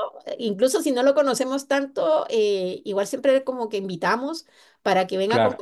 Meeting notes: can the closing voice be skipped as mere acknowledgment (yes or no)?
yes